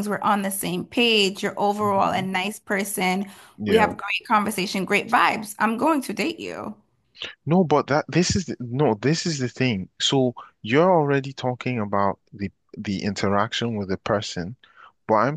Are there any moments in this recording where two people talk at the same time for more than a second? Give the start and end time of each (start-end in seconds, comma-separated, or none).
none